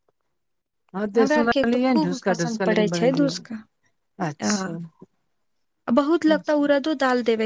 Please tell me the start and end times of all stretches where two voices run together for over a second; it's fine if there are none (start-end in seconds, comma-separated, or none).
1.2-3.5